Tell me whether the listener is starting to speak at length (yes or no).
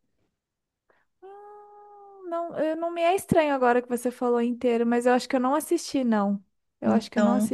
yes